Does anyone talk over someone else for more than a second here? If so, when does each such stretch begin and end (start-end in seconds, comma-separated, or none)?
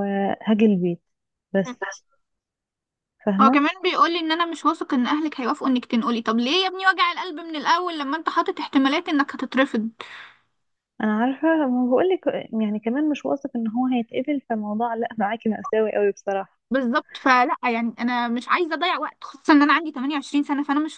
none